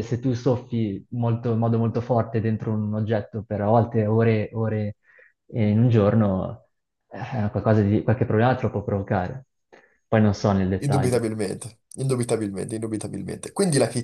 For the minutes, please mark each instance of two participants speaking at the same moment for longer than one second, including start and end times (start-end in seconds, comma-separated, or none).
none